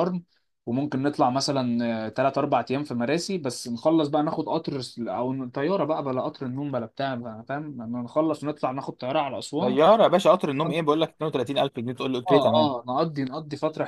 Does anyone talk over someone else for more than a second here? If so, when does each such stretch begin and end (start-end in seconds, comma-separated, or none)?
none